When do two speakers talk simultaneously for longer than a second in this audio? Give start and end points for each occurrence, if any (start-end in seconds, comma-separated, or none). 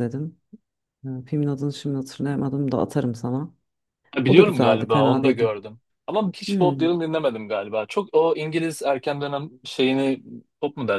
4.3-5.5